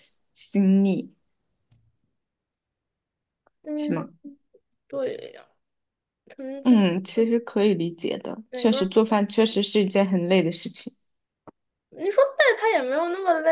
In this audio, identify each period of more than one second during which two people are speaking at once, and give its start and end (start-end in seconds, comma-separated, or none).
none